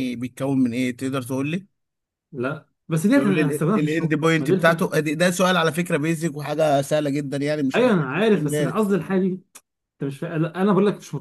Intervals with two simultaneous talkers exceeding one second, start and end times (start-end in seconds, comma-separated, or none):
3.1-4.9, 7.7-9.0